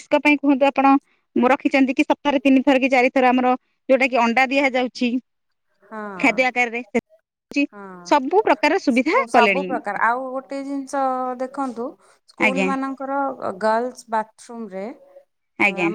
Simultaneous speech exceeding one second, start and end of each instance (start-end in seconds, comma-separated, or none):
none